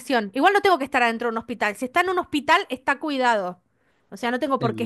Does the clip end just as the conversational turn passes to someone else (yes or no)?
yes